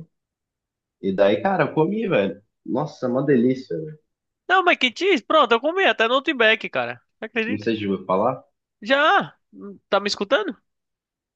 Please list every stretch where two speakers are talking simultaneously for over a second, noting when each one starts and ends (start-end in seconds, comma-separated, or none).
none